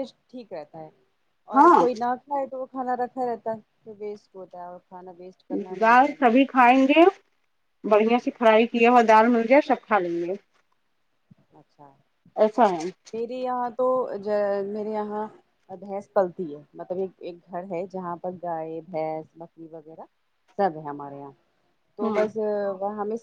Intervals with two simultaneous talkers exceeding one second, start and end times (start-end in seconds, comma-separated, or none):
none